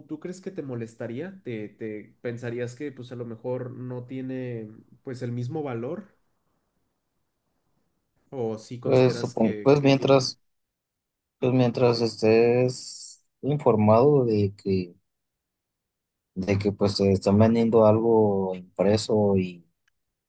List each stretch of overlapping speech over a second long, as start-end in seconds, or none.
8.8-10.2